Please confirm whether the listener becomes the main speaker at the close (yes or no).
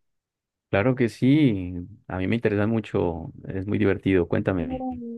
yes